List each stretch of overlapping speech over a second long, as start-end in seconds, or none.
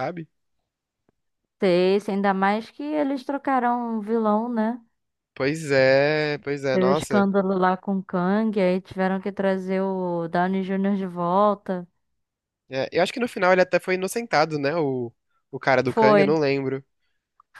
none